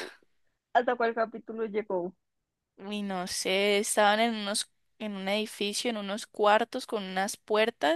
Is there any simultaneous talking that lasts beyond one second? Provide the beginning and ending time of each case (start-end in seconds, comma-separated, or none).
none